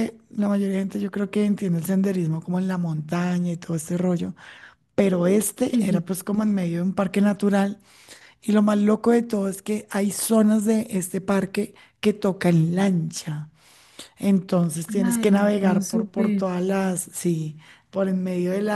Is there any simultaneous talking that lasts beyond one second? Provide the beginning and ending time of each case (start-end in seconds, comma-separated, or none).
15.0-16.4